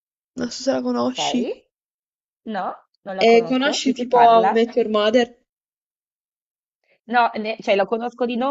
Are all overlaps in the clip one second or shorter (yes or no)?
no